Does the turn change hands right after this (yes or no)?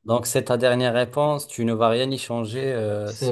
yes